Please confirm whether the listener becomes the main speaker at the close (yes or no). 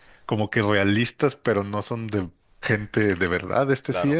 yes